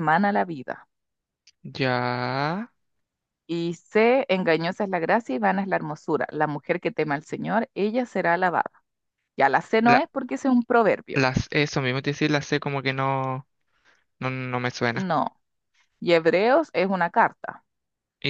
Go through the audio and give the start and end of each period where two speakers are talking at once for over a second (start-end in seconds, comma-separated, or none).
none